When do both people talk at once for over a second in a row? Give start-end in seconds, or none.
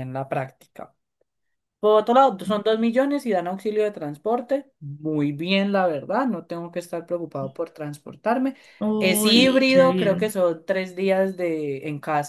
9.0-10.3